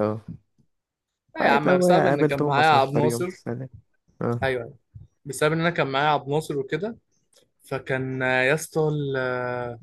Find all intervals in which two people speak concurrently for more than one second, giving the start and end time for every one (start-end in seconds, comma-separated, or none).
1.4-3.3